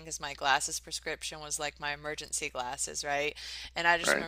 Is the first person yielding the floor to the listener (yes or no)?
no